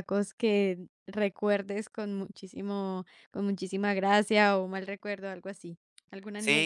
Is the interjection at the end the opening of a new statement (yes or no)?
yes